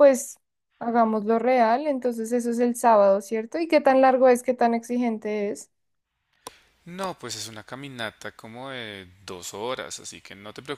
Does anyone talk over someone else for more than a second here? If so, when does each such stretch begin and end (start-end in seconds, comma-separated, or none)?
none